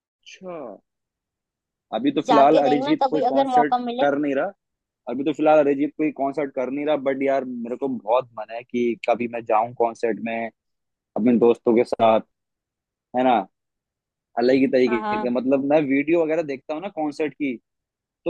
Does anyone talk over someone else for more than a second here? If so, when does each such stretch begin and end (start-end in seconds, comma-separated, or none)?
2.3-4.1